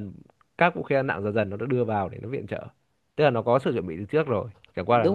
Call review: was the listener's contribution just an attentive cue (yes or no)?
no